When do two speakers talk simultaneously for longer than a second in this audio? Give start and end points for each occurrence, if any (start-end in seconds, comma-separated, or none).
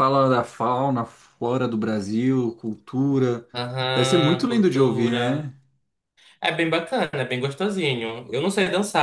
3.9-5.2